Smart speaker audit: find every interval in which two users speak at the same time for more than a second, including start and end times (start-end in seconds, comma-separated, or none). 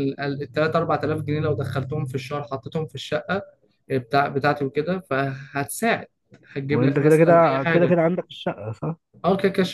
6.7-7.9